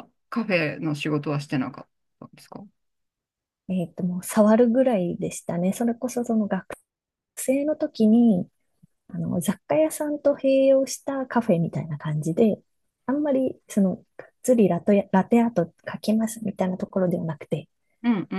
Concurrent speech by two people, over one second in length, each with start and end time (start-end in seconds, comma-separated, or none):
none